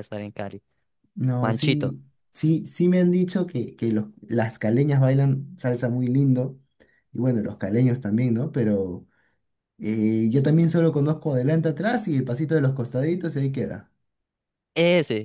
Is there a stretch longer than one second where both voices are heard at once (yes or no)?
no